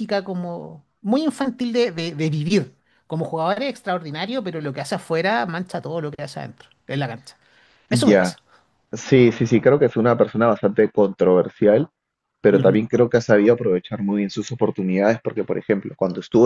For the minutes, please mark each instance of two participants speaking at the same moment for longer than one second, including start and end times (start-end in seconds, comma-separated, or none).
none